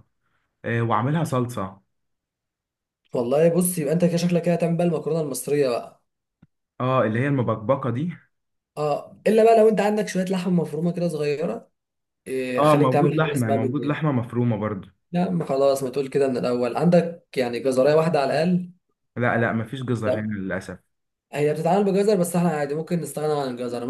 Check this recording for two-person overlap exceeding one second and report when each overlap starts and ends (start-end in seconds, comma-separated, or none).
12.6-14.1